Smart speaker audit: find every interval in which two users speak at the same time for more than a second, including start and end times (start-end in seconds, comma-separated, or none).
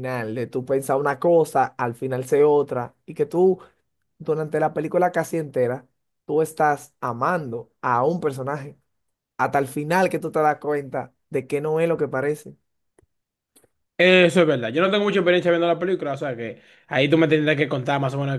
none